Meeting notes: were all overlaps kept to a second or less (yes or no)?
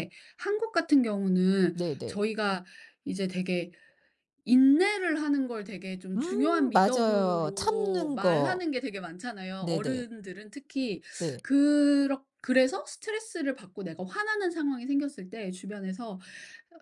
no